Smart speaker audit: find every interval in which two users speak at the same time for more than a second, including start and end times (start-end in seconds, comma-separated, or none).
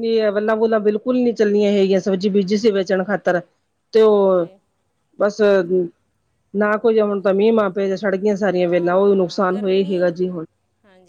8.6-10.1